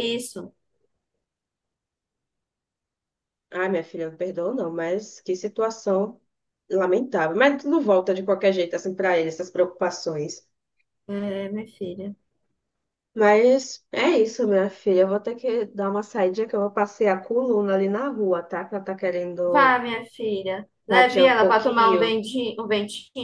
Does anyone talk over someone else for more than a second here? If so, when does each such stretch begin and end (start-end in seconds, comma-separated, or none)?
20.9-22.2